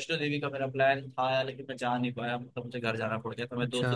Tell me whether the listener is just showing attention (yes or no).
no